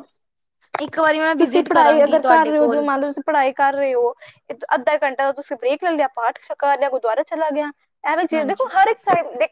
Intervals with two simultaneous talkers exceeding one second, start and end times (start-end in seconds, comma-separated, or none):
1.4-2.9